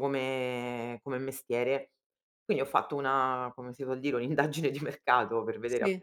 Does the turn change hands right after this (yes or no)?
no